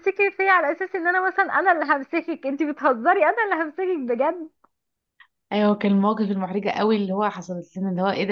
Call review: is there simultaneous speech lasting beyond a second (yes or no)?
no